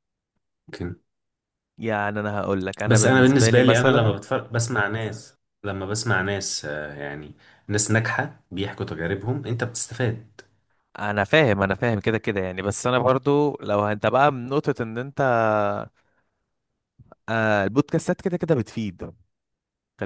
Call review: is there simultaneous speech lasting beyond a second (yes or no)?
yes